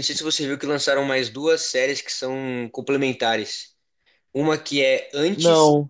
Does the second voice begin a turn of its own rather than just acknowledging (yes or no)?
no